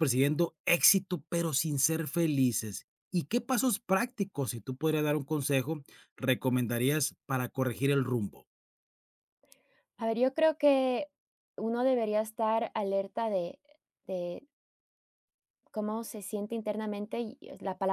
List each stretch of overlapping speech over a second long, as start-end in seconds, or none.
none